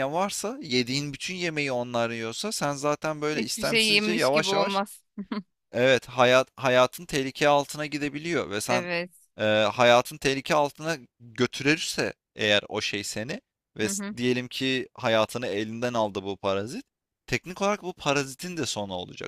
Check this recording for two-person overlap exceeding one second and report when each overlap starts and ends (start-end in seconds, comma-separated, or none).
3.3-4.8